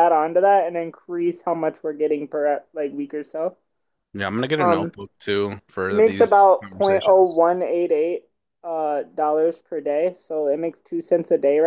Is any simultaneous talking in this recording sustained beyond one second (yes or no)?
yes